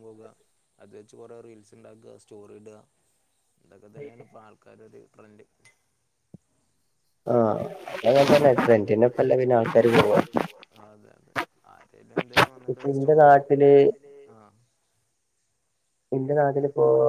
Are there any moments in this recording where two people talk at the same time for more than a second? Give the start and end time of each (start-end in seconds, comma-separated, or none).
8.5-10.2